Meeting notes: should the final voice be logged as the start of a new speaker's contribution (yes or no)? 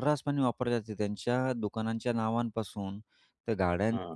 no